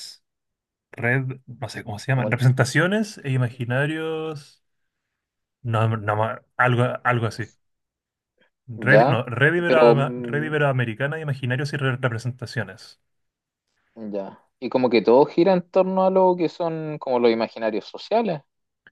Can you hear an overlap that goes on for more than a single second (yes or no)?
yes